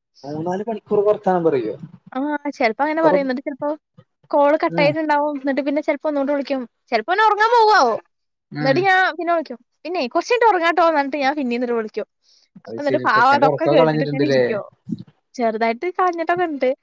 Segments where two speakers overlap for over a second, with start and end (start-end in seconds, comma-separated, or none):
12.8-14.4